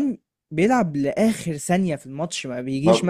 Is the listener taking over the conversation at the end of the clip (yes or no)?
no